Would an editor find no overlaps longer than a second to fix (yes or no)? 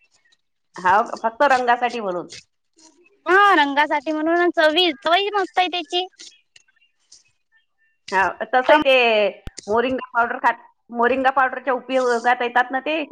yes